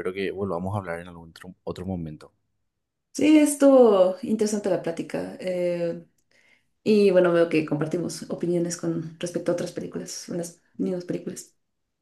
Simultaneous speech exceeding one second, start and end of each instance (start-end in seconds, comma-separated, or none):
none